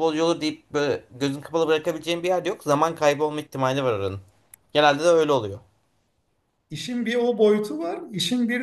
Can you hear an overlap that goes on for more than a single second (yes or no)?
no